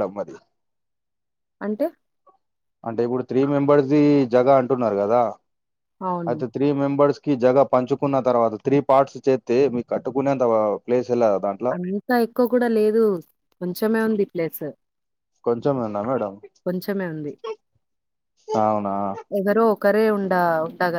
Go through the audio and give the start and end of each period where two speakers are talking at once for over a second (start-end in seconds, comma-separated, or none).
none